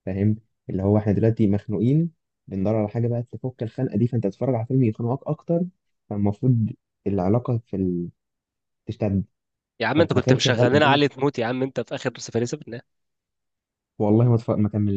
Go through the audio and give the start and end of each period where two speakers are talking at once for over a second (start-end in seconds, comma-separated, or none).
9.9-11.2